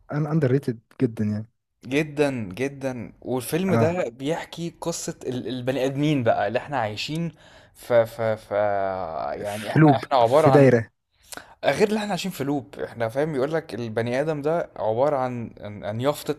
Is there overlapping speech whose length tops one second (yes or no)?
yes